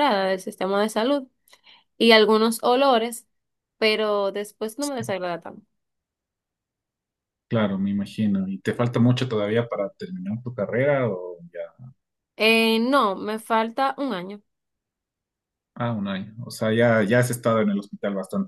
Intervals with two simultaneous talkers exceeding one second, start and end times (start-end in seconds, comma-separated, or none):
none